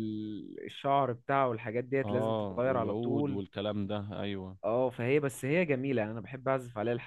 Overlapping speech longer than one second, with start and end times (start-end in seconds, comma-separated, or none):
2.0-3.4